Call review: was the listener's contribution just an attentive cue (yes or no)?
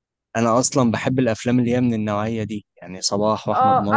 no